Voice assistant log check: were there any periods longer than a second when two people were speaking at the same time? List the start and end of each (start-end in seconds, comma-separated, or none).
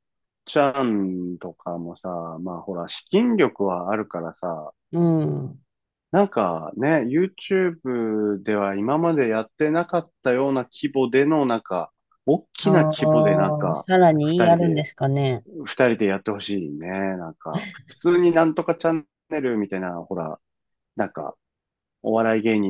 12.6-14.9